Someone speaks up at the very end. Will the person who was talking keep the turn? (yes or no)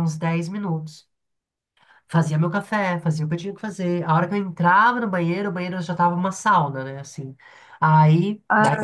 yes